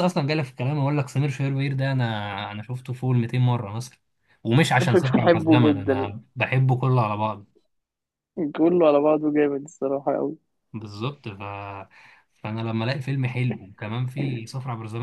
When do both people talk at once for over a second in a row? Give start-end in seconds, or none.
4.8-6.1